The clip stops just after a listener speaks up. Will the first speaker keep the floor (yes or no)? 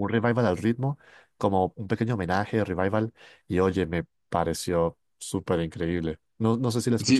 no